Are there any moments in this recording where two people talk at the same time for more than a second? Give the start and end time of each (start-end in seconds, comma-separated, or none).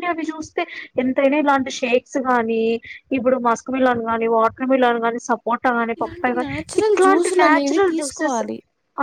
6.0-8.4